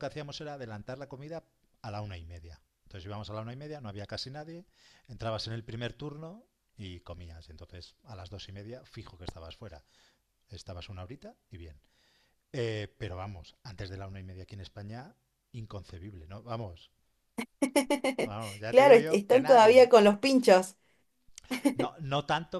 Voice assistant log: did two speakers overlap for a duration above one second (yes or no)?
yes